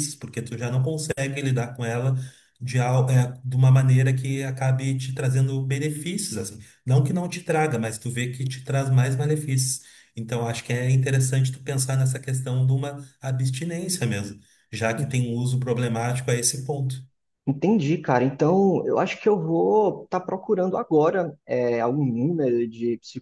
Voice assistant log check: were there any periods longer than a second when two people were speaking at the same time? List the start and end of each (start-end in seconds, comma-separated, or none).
none